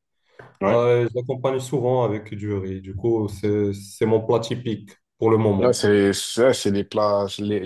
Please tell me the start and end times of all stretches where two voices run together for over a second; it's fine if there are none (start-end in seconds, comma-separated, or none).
none